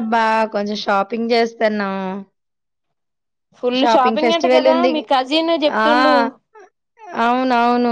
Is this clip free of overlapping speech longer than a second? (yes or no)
yes